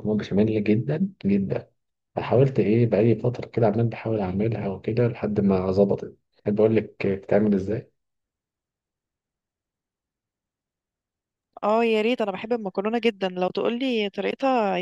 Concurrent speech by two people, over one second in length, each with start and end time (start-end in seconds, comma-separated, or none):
none